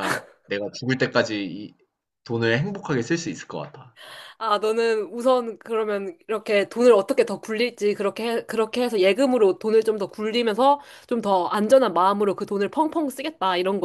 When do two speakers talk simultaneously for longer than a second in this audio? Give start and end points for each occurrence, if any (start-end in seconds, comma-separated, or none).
none